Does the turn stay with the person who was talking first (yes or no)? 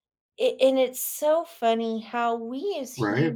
yes